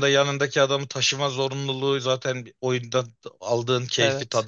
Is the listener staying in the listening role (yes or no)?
yes